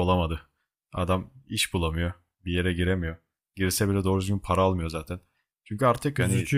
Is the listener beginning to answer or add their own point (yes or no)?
no